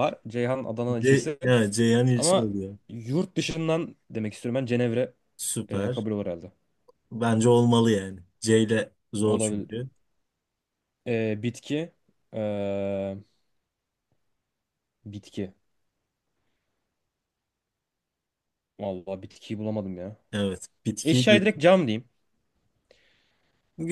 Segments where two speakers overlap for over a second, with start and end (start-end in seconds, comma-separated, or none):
none